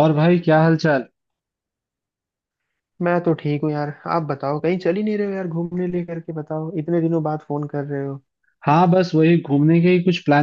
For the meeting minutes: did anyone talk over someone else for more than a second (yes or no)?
no